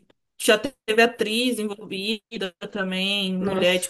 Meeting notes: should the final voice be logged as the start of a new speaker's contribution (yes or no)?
no